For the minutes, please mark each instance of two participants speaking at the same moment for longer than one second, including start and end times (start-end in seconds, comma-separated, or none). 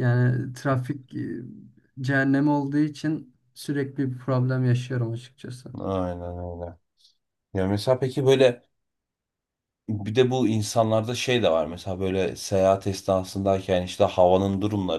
none